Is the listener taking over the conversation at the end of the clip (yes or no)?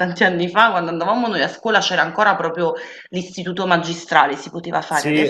yes